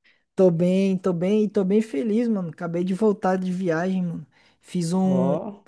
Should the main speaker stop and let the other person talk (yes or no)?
no